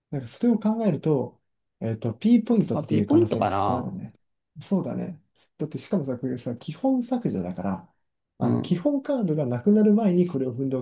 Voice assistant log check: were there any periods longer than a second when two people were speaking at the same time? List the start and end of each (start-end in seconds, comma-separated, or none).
2.7-4.0